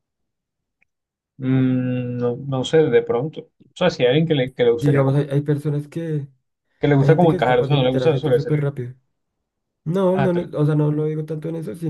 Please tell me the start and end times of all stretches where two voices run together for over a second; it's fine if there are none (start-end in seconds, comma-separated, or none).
7.0-8.7